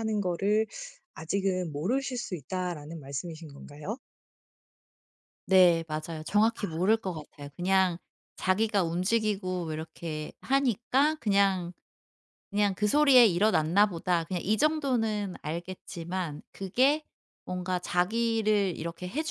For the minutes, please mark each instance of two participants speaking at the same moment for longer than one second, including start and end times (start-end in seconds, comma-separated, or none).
none